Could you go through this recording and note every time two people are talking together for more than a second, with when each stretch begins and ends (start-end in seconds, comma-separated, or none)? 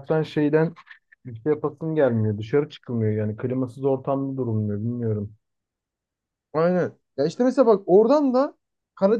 none